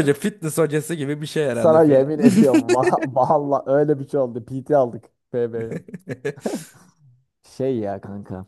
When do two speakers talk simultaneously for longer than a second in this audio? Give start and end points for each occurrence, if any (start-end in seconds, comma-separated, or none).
1.5-2.8